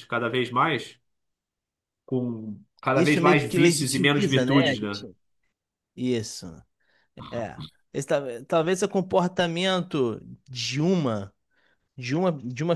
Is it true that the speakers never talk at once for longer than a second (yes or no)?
no